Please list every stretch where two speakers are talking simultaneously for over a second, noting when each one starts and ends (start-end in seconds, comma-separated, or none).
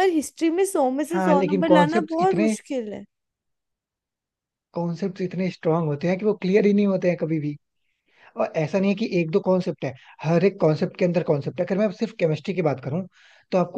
1.1-2.5